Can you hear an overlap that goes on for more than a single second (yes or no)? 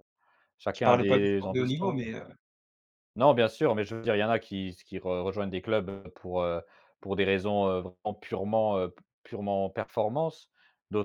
yes